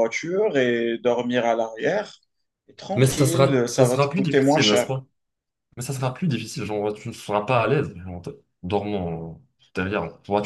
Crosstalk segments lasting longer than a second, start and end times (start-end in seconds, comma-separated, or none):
3.0-4.9